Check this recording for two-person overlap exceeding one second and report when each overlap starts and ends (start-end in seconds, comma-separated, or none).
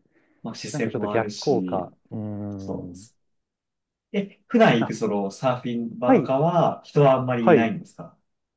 0.7-1.9